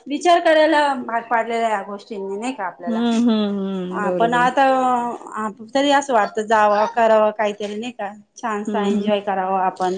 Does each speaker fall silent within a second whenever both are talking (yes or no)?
yes